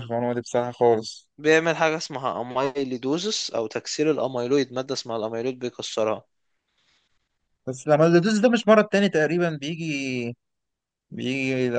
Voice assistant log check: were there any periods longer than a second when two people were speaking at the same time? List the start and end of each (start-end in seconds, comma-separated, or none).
none